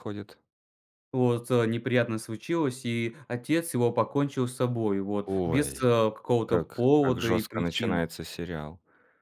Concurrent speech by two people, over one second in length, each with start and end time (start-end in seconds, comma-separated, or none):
6.5-8.0